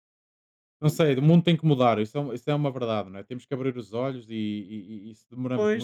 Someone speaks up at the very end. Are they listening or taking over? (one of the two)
taking over